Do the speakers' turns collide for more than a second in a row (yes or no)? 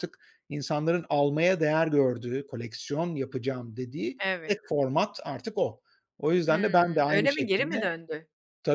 yes